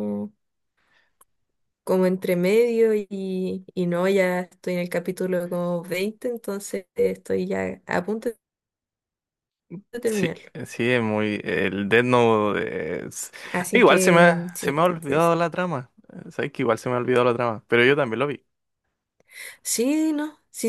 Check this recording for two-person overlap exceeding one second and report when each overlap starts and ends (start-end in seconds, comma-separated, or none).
13.7-15.3